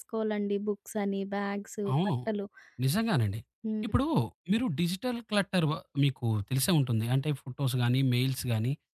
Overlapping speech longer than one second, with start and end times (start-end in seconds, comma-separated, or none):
none